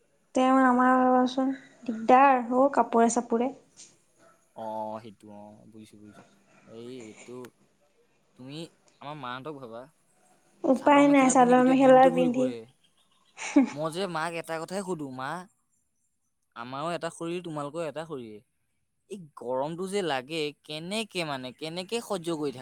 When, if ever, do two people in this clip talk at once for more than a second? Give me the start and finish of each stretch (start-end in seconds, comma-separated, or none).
10.8-12.5